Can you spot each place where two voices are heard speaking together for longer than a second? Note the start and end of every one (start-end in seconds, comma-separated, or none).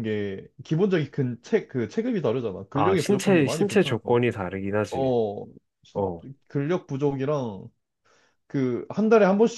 2.7-4.2